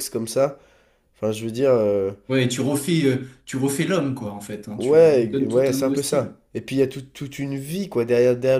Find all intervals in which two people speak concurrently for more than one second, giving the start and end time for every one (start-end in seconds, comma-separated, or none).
4.8-6.3